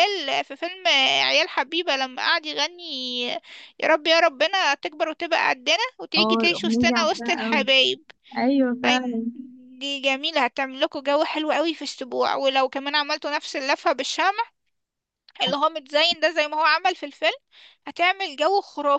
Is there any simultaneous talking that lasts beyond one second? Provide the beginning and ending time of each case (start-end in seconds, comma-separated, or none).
6.2-7.6